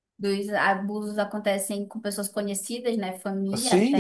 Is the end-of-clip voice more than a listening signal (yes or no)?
yes